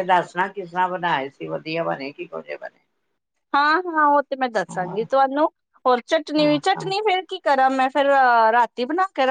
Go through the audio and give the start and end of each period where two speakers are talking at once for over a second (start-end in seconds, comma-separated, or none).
none